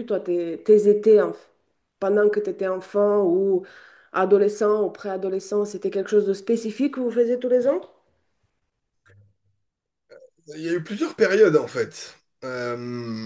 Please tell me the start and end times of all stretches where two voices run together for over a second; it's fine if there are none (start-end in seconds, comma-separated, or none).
none